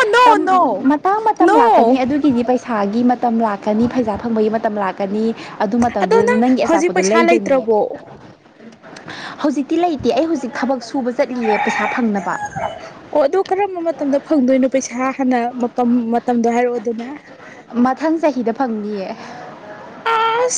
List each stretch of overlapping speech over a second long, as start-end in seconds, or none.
6.0-7.7